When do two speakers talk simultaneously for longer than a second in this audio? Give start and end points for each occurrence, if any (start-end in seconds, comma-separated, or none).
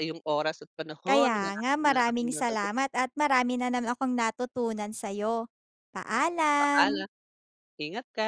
1.1-2.7